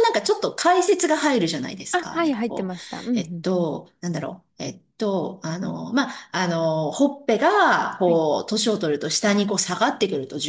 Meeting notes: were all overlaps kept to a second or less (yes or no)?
no